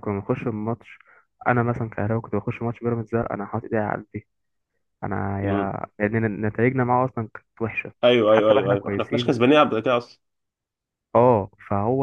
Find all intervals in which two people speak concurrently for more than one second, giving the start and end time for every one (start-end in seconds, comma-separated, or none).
8.0-9.4